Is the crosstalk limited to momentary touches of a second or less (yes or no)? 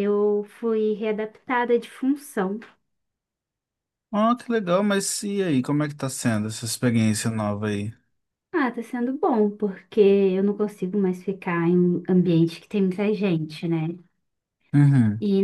yes